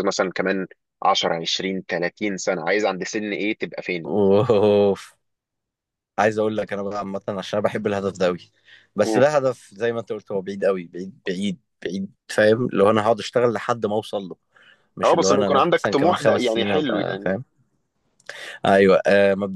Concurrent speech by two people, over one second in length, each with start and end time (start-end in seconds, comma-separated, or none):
15.0-17.3